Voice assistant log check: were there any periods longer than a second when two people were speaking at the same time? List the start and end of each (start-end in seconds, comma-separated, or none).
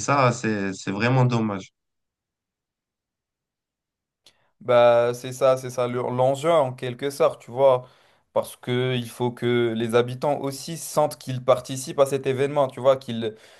none